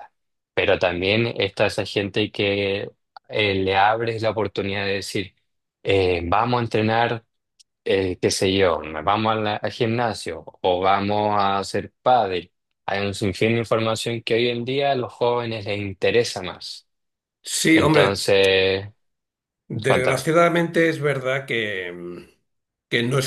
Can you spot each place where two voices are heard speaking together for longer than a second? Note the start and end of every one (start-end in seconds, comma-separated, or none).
none